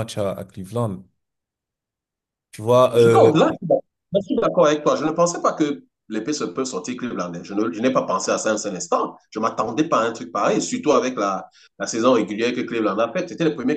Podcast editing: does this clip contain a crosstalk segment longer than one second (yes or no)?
no